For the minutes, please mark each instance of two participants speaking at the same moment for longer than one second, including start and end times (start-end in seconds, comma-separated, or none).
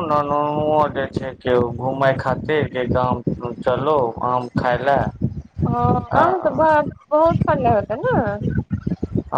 none